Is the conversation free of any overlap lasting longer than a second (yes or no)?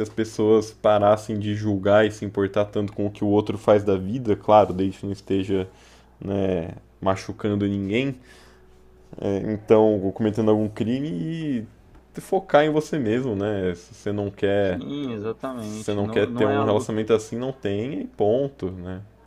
no